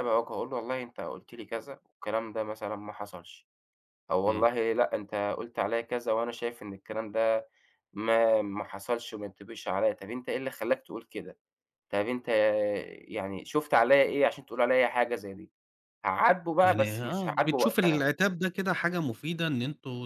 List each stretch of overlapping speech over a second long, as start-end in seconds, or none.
16.6-18.0